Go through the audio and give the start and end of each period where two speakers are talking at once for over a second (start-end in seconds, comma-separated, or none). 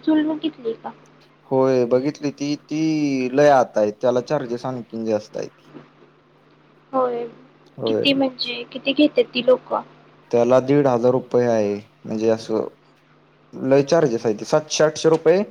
none